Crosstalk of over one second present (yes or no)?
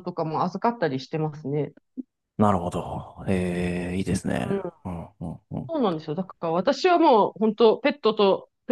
no